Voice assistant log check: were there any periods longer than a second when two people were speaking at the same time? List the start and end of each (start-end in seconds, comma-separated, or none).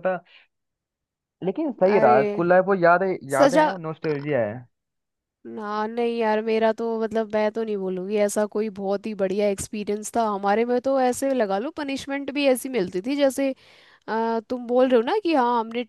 none